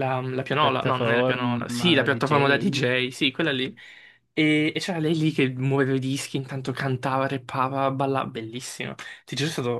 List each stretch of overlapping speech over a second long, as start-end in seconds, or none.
0.6-2.8